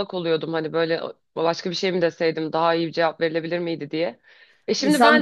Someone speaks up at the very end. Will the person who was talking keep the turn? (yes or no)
no